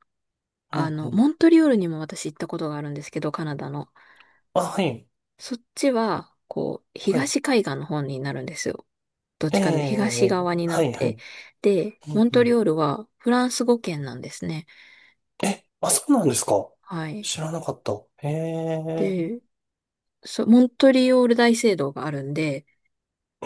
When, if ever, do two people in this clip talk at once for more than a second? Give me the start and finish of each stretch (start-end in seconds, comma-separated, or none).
9.5-11.2